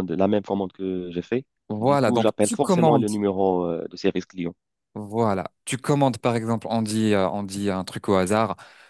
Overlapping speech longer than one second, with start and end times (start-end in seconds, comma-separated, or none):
1.8-3.1